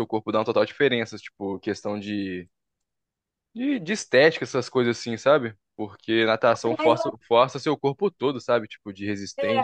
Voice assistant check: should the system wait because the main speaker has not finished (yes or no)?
no